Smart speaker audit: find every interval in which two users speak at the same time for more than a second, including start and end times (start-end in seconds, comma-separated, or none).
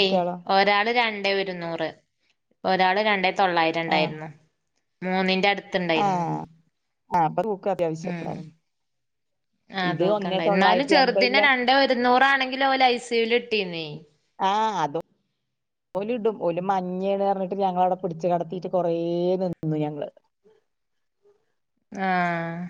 9.9-11.4